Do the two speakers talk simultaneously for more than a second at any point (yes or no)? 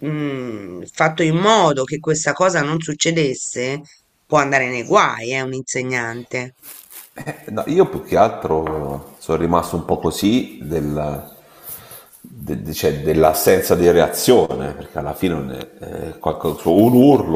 no